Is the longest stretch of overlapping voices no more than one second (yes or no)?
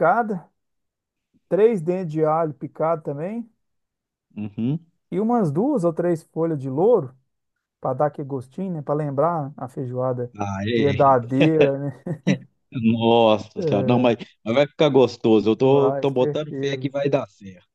no